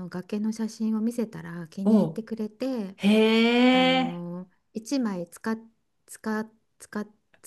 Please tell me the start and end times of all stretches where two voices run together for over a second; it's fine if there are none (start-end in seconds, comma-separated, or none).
none